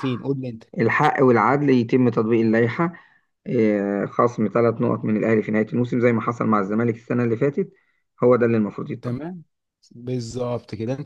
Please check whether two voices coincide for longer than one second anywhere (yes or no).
no